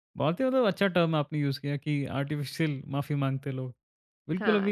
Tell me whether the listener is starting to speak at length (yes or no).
no